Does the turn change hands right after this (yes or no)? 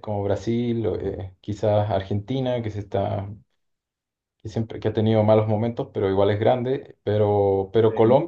no